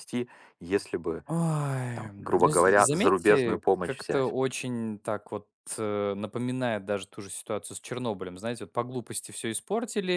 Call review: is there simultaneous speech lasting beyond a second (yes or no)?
yes